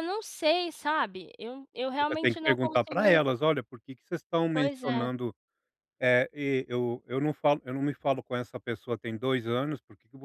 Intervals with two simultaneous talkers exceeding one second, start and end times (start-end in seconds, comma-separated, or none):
2.0-3.2